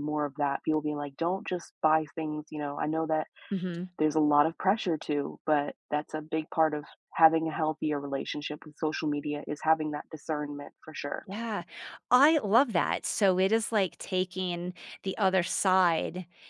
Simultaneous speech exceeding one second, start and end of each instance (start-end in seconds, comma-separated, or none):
none